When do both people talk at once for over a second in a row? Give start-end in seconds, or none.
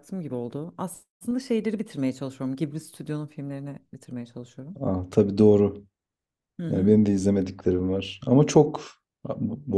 none